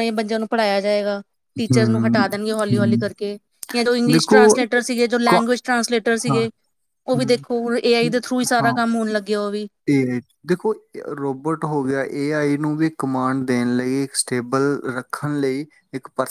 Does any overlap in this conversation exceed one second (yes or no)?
yes